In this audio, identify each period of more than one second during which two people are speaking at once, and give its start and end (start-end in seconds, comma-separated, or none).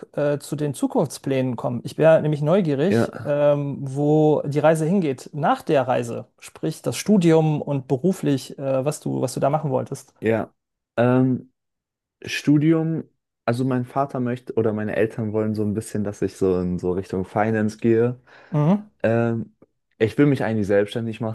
none